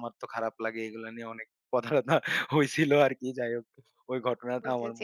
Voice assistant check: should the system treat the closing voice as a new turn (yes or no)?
yes